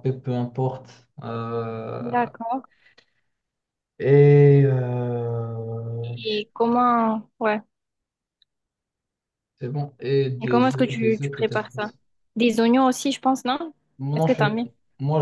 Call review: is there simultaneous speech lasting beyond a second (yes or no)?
yes